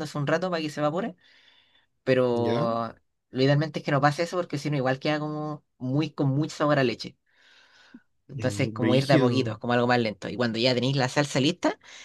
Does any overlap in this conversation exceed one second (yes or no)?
yes